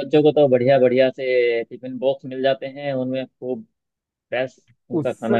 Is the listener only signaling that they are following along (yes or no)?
no